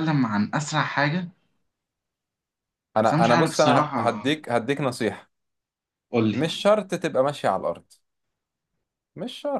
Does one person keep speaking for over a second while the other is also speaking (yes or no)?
yes